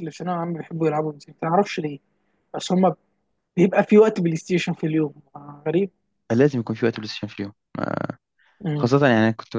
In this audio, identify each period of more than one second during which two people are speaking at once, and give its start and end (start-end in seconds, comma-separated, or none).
none